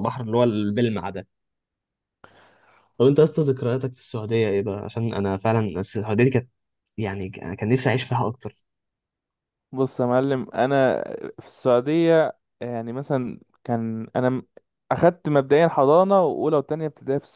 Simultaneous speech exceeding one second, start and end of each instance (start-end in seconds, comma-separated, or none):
none